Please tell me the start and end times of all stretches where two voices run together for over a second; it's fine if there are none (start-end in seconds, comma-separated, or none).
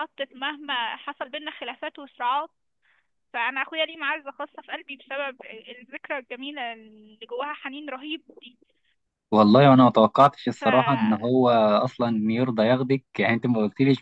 none